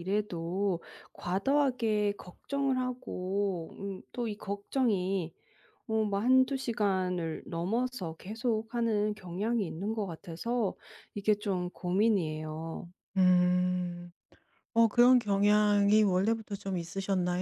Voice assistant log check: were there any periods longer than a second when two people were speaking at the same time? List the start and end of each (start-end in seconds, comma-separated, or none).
none